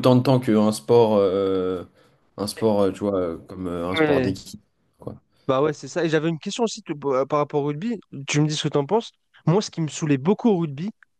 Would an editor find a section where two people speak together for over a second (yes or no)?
no